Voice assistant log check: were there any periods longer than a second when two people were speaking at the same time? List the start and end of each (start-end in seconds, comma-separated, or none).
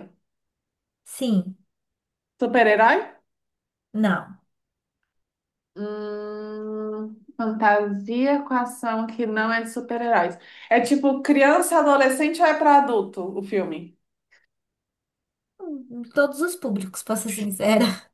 none